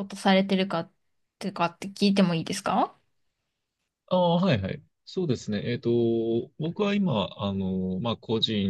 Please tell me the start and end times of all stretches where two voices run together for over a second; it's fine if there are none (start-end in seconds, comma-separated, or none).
none